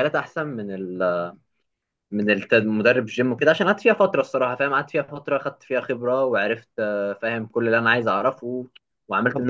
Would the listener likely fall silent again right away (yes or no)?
no